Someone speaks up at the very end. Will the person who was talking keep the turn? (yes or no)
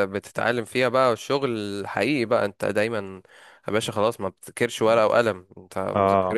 yes